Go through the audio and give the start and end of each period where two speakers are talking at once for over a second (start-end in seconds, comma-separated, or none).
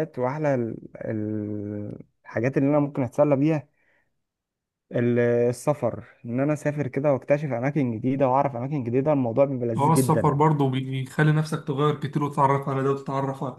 none